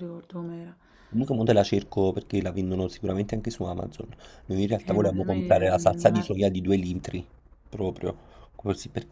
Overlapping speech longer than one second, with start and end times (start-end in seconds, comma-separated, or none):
4.9-6.2